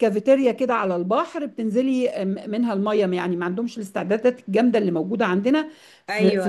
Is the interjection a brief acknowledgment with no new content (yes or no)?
yes